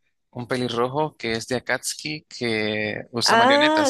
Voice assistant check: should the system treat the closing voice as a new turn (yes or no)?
yes